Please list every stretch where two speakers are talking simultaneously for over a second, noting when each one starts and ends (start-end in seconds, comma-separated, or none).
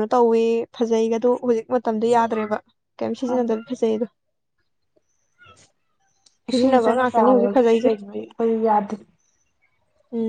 6.5-7.9